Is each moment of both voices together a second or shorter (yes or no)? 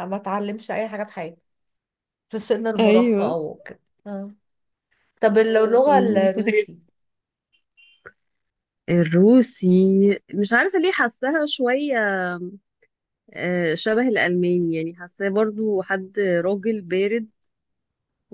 no